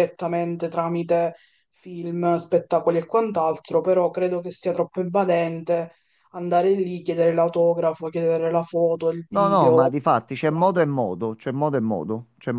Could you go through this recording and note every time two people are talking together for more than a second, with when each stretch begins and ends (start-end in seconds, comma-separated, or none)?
9.3-10.7